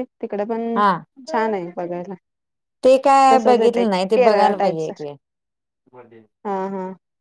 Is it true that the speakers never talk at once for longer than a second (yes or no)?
no